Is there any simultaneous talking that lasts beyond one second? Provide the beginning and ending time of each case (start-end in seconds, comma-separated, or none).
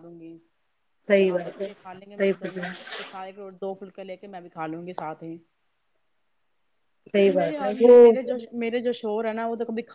1.3-2.7